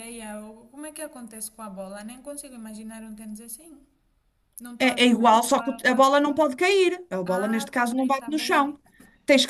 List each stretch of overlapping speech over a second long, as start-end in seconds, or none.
4.8-6.4, 7.2-8.7